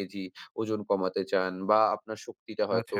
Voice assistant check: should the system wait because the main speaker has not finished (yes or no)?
yes